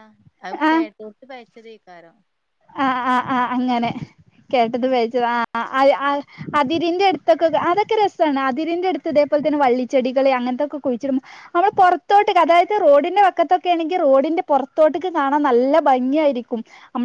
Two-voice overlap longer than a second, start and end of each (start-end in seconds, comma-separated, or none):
none